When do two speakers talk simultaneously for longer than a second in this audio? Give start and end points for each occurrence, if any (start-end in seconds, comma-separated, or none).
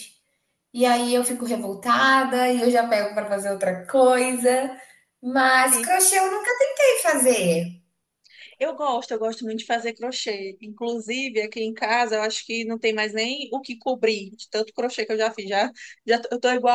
none